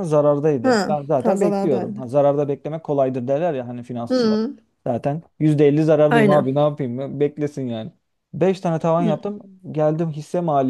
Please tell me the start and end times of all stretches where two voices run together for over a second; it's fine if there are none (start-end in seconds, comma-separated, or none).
0.6-2.1